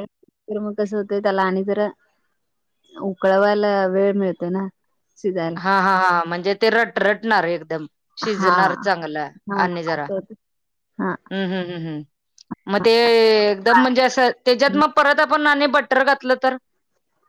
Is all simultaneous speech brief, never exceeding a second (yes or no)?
yes